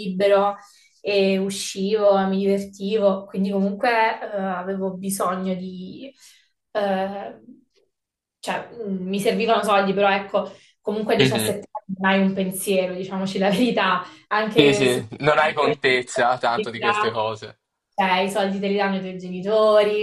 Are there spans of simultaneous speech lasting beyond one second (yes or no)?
yes